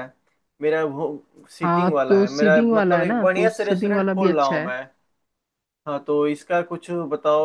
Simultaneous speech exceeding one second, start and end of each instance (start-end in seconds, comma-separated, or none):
1.6-4.8